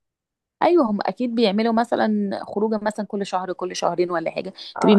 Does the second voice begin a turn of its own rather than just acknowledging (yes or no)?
no